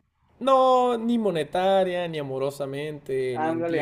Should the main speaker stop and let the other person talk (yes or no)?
yes